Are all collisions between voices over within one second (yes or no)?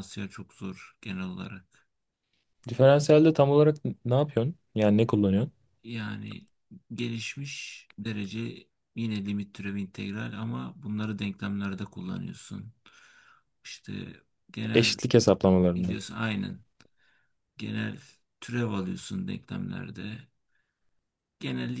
yes